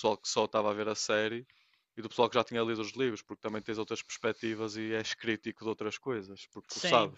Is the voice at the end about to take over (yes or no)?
yes